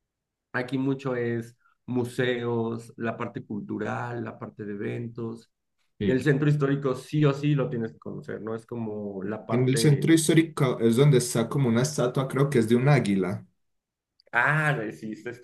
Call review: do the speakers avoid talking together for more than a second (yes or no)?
yes